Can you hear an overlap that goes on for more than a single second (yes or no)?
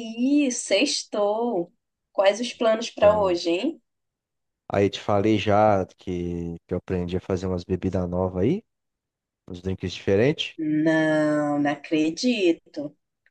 no